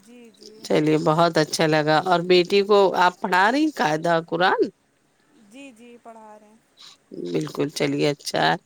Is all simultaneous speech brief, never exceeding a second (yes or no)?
yes